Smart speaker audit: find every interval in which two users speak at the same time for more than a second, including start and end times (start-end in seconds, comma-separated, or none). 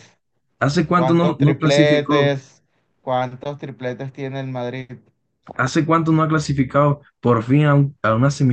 0.9-2.3